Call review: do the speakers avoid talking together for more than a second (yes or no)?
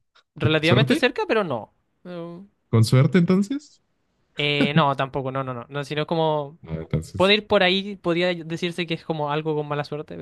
yes